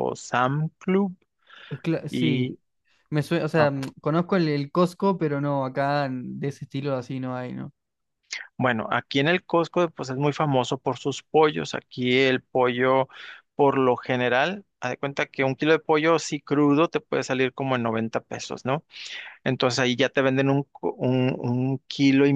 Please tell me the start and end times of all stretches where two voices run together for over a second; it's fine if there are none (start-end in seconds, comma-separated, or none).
none